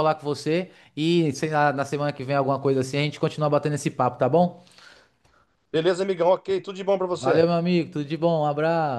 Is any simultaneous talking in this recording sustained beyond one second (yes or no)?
no